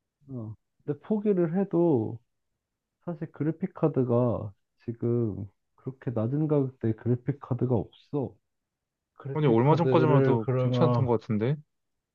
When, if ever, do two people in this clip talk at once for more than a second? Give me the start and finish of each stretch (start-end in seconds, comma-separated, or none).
9.3-11.1